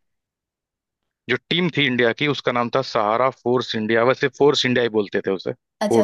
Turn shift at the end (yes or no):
yes